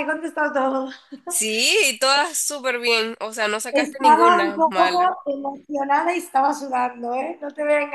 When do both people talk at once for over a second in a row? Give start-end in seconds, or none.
3.7-5.2